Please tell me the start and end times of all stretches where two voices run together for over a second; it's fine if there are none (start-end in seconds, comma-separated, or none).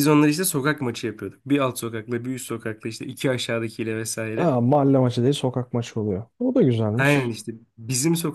none